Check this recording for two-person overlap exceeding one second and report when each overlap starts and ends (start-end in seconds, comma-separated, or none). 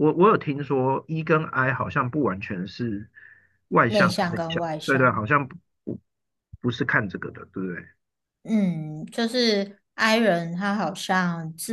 3.9-5.3